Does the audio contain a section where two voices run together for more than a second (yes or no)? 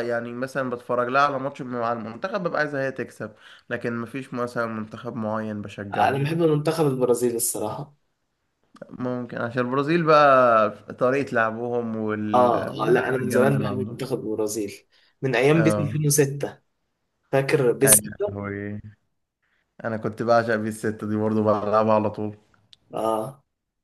yes